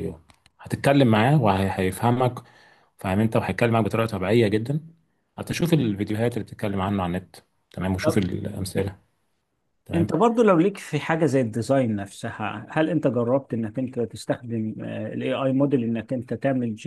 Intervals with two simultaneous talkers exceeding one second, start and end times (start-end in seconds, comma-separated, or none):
none